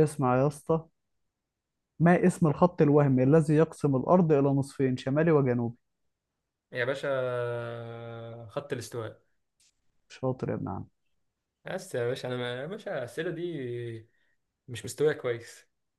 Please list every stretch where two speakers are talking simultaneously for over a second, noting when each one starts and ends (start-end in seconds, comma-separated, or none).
none